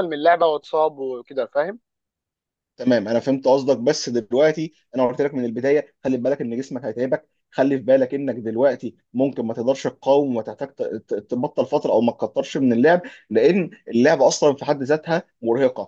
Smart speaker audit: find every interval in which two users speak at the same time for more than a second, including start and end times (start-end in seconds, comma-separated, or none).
none